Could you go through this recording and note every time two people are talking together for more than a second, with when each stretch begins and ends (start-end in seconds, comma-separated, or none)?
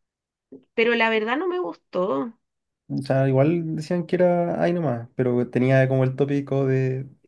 none